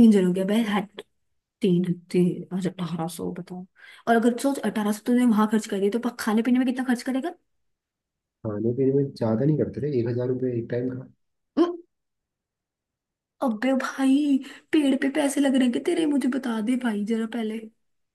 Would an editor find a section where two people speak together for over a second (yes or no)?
no